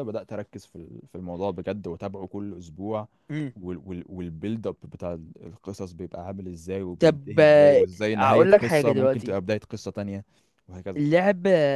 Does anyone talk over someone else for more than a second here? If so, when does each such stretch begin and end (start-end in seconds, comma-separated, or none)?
7.0-9.4